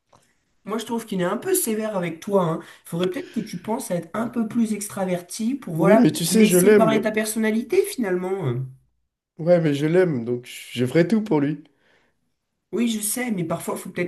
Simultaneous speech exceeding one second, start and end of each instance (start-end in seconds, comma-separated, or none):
5.8-7.0